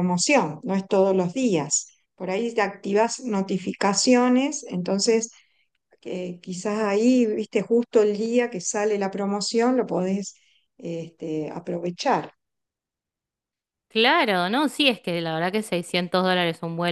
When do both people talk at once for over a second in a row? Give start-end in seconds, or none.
none